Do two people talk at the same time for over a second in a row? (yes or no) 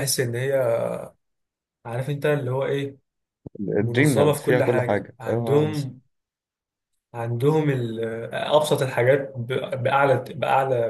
yes